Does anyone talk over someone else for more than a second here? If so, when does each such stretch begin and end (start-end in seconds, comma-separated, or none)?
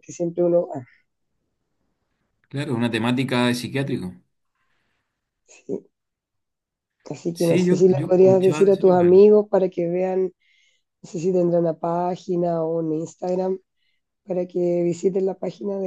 7.3-9.2